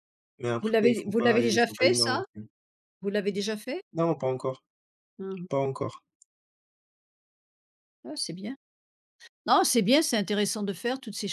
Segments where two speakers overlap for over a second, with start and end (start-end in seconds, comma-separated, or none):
0.6-2.2